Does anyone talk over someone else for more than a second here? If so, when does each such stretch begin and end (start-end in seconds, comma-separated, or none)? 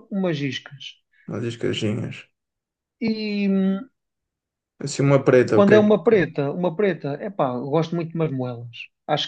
none